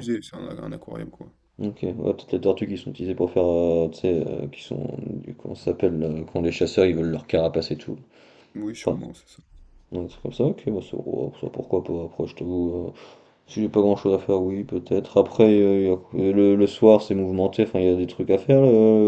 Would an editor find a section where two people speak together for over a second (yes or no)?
no